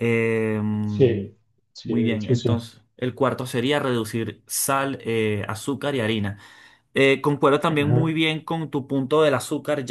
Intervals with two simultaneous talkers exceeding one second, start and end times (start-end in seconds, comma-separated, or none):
0.8-2.6